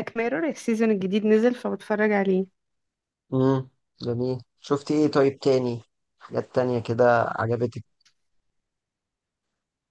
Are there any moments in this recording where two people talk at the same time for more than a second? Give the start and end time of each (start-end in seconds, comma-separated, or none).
none